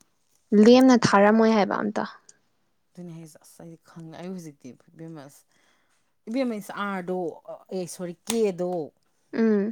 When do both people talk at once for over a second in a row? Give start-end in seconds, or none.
none